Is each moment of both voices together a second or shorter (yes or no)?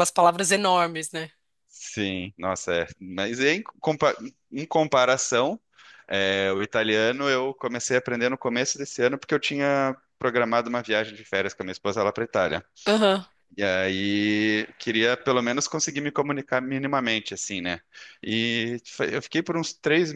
yes